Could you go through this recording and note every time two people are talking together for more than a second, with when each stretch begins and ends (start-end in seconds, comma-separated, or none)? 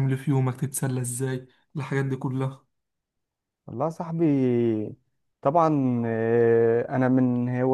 none